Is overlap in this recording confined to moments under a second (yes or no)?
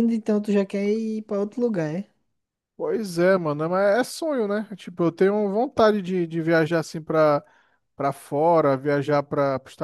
yes